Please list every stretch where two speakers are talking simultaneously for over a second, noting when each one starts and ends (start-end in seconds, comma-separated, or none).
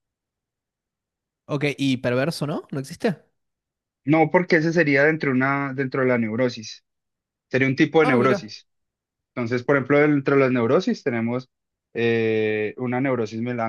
none